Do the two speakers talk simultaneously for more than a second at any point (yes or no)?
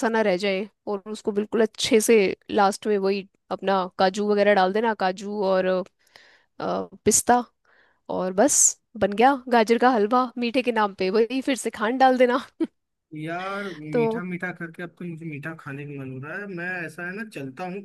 no